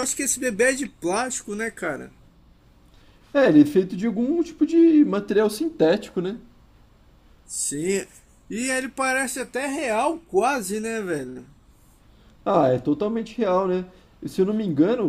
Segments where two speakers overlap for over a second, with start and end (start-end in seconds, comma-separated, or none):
none